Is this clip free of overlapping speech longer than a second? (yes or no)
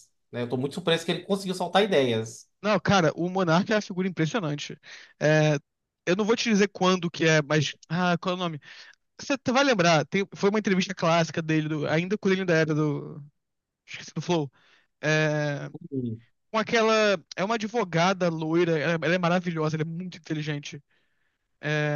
yes